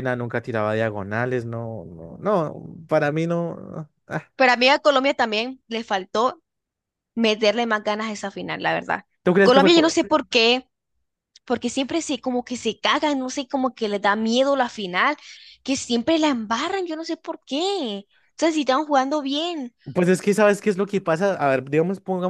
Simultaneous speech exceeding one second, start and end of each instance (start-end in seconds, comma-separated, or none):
none